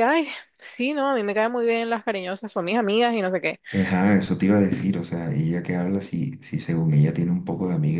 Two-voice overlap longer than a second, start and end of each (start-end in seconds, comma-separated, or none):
none